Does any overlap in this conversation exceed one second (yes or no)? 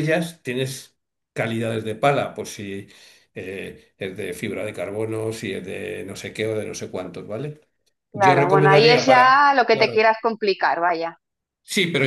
yes